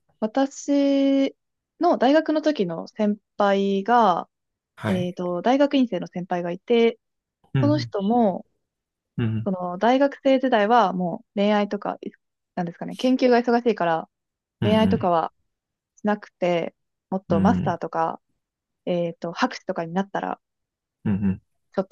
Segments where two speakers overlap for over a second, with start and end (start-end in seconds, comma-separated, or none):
none